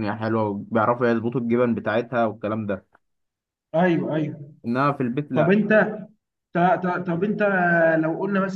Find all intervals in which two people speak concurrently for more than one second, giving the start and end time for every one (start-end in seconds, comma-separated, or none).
none